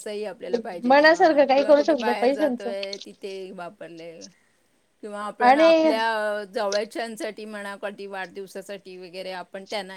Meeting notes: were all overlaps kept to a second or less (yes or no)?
no